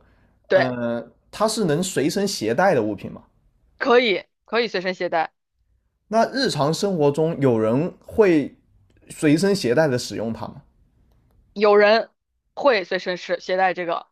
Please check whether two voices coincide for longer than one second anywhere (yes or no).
no